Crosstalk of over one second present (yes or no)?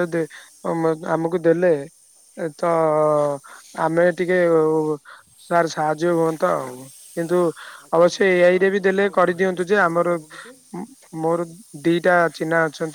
yes